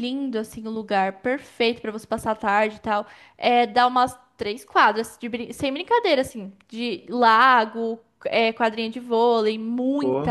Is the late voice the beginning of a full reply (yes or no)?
no